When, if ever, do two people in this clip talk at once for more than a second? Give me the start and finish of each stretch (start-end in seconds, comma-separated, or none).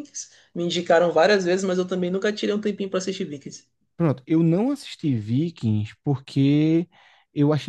none